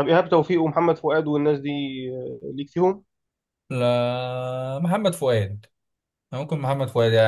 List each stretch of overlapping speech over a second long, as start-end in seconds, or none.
none